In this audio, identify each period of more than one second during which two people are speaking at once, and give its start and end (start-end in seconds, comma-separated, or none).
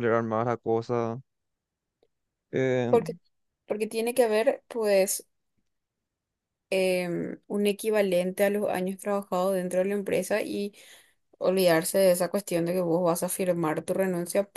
none